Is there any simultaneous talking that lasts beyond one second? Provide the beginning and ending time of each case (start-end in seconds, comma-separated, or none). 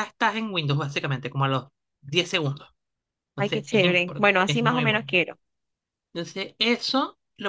3.4-5.2